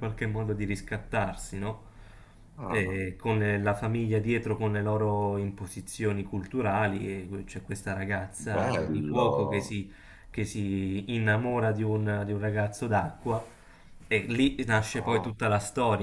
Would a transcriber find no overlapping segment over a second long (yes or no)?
no